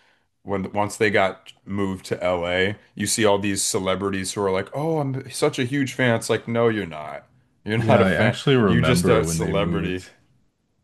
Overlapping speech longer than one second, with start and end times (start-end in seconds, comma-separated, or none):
7.8-10.0